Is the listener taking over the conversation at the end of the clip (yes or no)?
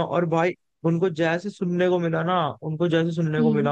no